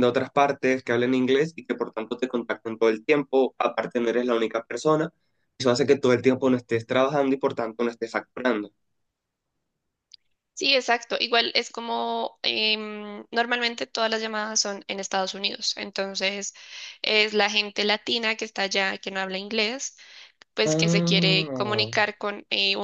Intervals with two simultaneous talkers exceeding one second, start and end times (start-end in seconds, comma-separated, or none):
20.6-21.9